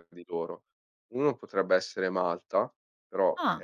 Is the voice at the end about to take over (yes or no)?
no